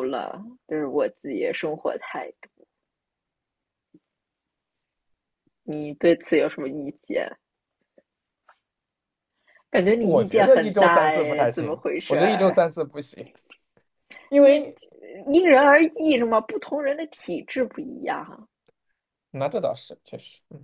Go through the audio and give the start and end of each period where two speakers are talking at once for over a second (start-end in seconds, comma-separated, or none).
10.0-12.6